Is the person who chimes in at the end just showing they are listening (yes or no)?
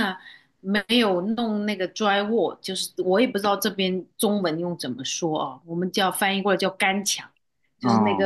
yes